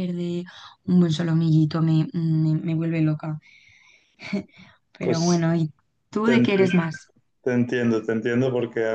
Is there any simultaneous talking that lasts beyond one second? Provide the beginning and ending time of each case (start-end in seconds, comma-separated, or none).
none